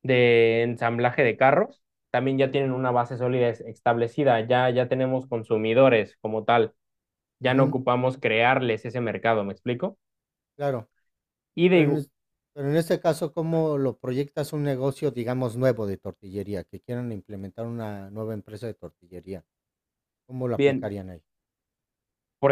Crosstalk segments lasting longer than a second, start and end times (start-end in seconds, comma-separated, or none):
none